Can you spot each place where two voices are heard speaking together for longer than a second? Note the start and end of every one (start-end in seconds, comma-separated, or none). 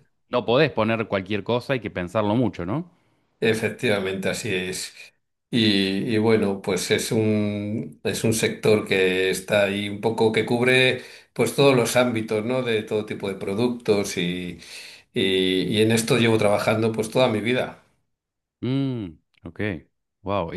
none